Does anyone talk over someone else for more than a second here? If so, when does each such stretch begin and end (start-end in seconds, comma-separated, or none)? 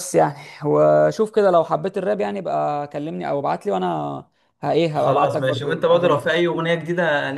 4.9-6.4